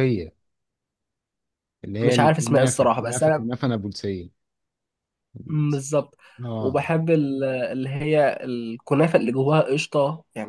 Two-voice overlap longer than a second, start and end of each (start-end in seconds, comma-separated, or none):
2.0-3.4